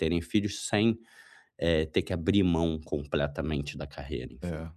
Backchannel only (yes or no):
yes